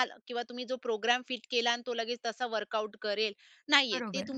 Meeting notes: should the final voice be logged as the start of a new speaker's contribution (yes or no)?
no